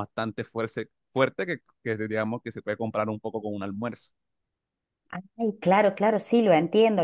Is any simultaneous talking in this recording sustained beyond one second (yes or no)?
no